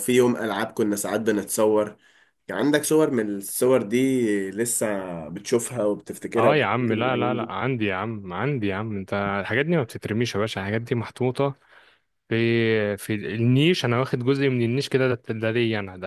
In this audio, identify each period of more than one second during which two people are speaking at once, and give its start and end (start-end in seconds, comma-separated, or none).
6.4-7.7